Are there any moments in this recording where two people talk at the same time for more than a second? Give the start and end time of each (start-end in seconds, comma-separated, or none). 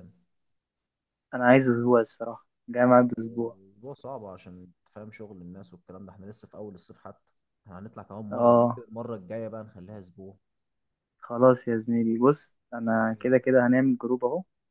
none